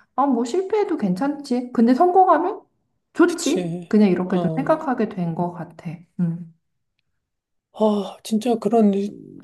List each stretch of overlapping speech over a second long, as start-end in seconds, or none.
3.2-4.8